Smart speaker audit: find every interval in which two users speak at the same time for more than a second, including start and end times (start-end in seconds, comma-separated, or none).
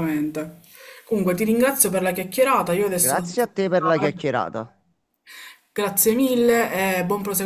2.9-4.1